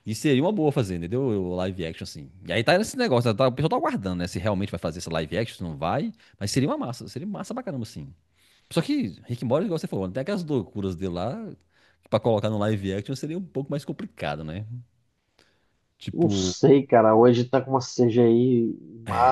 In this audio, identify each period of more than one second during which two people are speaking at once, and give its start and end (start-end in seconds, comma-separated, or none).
none